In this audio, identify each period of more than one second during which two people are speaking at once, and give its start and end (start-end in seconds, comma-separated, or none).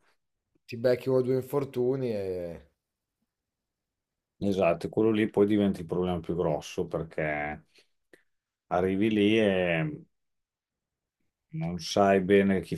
none